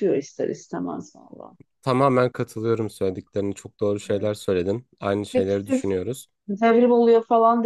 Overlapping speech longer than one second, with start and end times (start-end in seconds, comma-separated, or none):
none